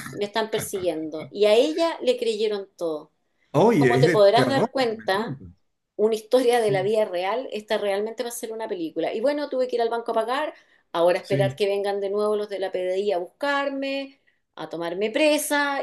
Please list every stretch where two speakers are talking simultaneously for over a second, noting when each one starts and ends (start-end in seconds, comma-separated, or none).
3.8-5.4